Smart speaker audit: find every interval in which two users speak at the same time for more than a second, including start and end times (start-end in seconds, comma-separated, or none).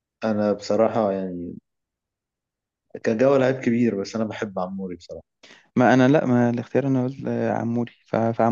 none